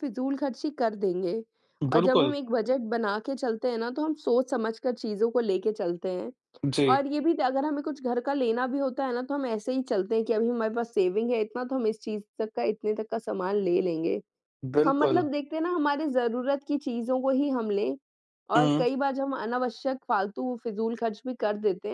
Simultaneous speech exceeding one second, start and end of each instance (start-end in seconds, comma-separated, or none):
none